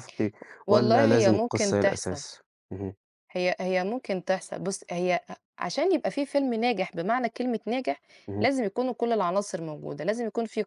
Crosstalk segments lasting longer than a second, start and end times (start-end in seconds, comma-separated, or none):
0.7-2.2